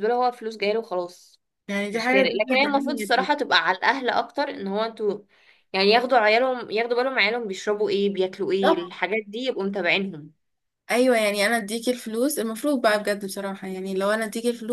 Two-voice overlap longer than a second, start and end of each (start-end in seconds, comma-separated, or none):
1.9-3.3